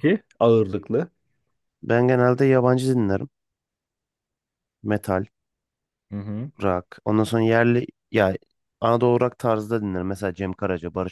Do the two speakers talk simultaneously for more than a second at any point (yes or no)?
no